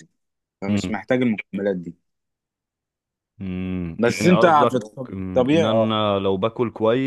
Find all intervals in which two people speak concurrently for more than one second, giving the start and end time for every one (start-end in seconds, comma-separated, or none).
4.0-6.0